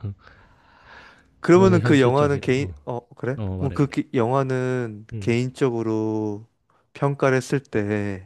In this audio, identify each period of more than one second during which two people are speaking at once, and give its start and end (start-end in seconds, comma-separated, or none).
1.5-2.7